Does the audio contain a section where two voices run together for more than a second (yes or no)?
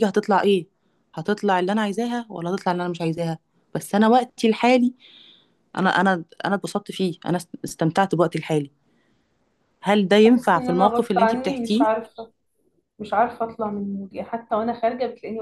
yes